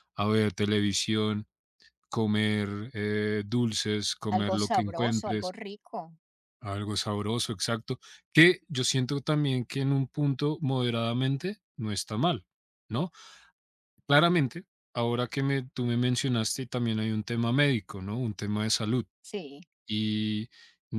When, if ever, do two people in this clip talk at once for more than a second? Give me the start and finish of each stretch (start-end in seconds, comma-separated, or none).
4.3-5.5